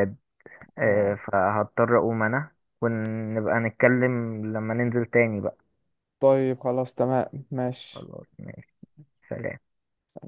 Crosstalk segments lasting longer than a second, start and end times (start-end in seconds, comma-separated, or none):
none